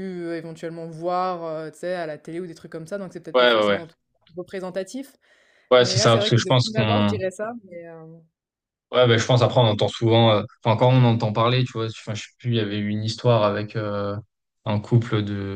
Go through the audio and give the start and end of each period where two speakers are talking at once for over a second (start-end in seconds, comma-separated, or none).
5.8-7.2